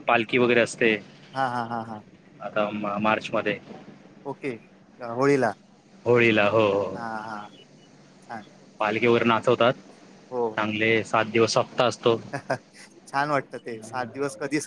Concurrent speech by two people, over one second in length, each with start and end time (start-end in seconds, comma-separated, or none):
none